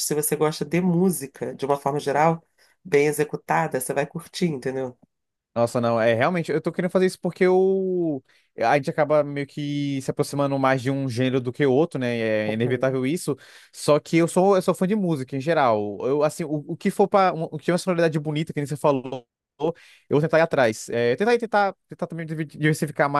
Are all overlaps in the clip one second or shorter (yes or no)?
yes